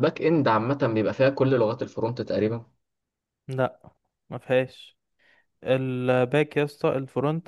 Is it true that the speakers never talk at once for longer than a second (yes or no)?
yes